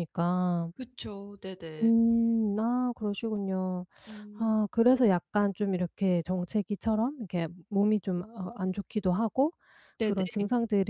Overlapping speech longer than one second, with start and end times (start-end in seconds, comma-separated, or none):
none